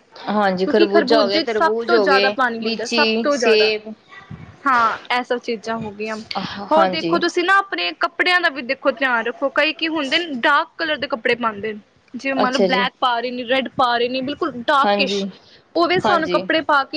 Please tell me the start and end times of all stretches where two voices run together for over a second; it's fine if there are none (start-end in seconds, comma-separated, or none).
0.6-3.7